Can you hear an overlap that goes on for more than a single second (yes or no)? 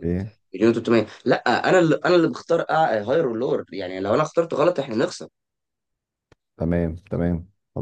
no